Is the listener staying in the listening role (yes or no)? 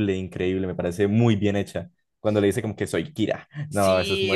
no